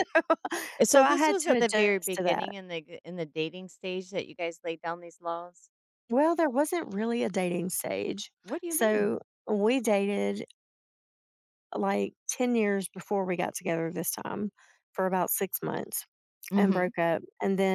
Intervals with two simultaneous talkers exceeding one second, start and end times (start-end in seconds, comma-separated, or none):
0.8-2.5